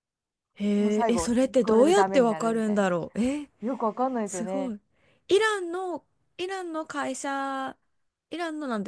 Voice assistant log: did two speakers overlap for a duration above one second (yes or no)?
yes